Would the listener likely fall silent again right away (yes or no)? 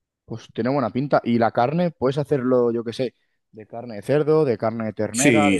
no